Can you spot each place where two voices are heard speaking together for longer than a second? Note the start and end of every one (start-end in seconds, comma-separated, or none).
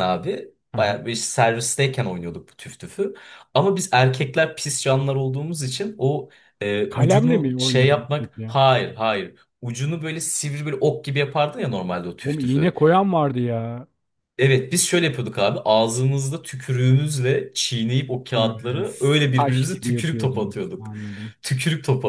6.9-8.6, 19.3-20.9